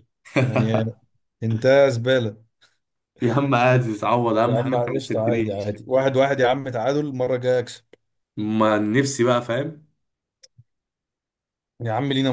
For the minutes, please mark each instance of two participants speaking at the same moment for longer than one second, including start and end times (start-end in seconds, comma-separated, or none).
4.5-5.8